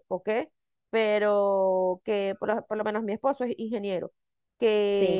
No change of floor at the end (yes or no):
yes